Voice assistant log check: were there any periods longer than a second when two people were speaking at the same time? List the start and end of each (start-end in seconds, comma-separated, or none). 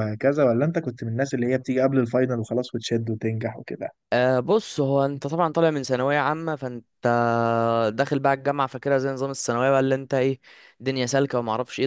none